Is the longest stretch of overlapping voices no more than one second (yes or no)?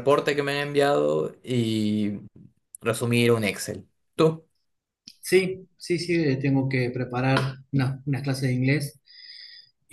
yes